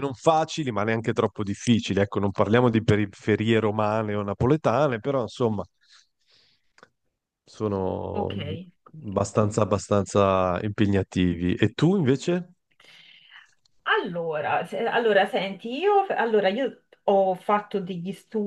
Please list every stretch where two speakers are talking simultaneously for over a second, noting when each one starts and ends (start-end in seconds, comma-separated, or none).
none